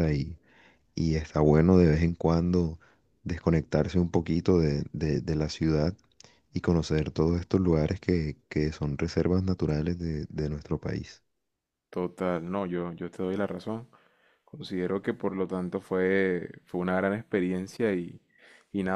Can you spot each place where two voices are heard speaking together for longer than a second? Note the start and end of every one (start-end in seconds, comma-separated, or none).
none